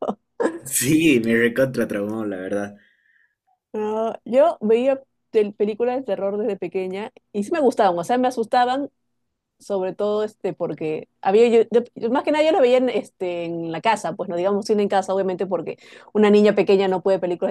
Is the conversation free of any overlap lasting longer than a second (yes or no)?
yes